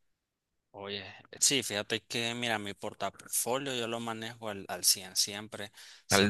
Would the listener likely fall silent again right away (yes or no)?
yes